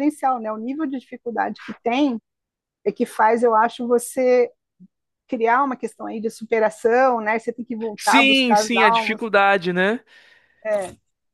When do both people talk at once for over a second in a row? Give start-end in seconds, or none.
8.0-9.3